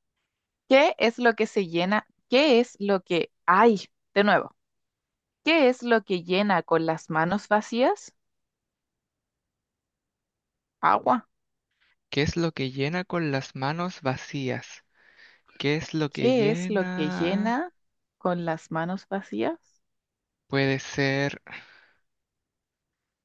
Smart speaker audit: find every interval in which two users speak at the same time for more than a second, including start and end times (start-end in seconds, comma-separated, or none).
16.1-17.6